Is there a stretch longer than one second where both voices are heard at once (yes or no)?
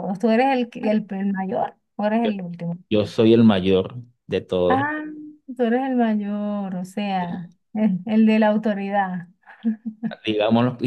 no